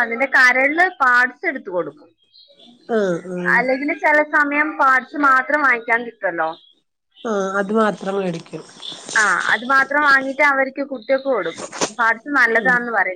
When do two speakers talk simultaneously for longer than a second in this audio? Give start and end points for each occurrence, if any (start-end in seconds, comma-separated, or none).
none